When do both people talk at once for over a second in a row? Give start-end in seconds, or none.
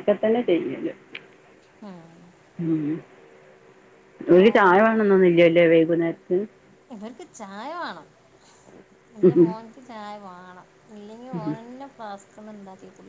none